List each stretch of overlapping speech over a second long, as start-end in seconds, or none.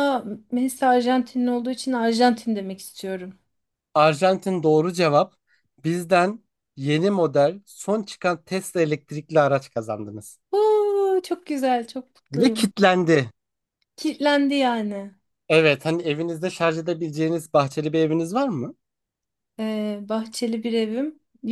none